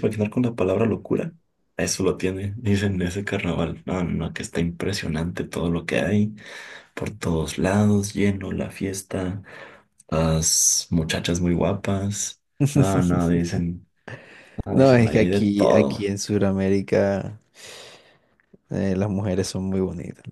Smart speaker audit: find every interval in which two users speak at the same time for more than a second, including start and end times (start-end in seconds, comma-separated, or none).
14.7-16.1